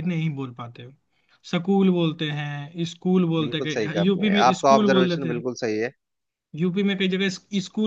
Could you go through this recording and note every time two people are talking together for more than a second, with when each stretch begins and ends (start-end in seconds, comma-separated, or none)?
3.4-5.4